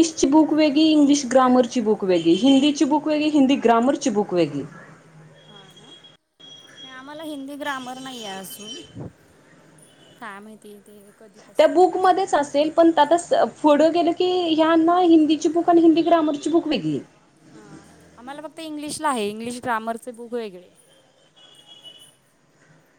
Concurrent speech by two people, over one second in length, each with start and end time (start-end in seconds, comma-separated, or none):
none